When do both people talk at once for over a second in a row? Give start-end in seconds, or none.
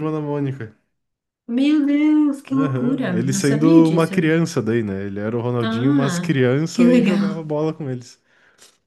2.5-4.1, 5.6-7.4